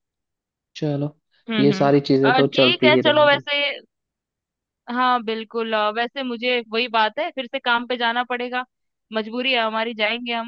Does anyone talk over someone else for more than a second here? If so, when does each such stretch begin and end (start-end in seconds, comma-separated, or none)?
1.6-3.4